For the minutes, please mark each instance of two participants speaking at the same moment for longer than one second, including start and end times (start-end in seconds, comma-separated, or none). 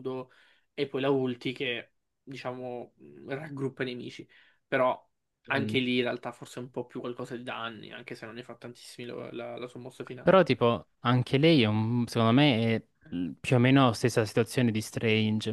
none